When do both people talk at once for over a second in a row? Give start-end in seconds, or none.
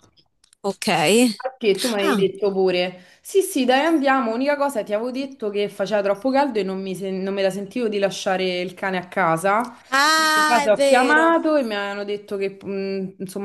9.9-11.3